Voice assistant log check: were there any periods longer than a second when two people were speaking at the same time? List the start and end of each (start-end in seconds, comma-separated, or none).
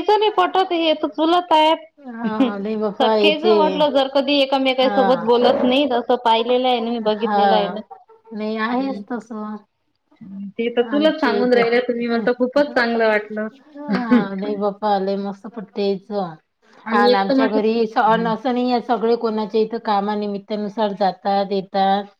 11.4-12.6